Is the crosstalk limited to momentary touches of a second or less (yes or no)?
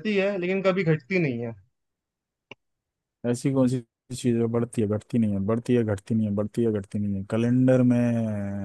yes